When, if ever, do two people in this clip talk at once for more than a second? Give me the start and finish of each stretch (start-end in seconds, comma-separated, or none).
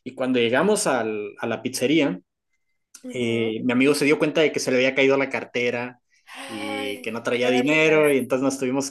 6.5-8.1